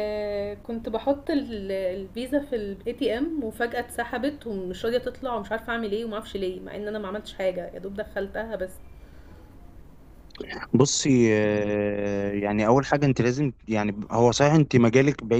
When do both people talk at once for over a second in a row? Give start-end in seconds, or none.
none